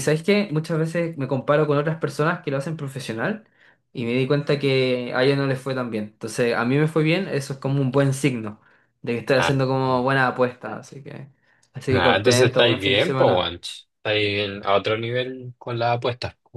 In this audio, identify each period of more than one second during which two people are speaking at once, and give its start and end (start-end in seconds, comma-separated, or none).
11.9-13.5